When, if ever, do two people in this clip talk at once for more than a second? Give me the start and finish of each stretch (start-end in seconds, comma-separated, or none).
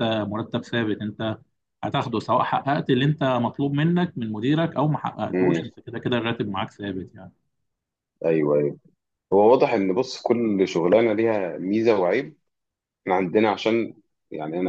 none